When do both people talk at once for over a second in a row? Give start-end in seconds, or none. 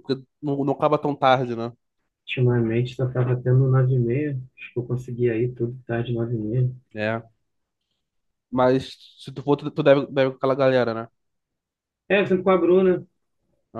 none